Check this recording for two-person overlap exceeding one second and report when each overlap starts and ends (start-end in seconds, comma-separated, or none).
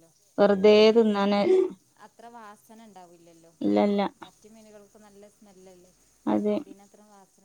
none